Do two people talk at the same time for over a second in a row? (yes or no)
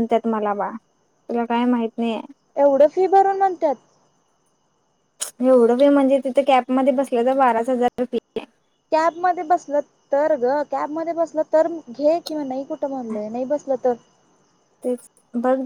no